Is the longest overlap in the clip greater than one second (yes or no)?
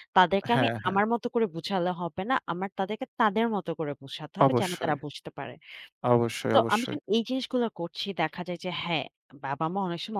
no